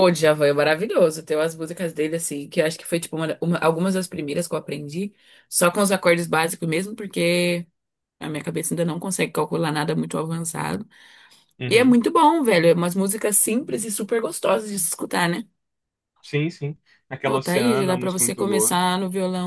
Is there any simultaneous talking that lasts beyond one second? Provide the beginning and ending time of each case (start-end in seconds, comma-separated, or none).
17.2-18.8